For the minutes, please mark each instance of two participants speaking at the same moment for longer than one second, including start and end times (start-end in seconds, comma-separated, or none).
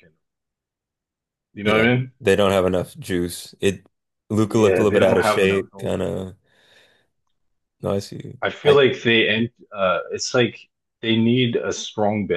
4.4-6.0